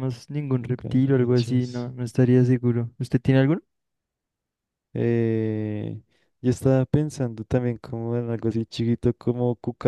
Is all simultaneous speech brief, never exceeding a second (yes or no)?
no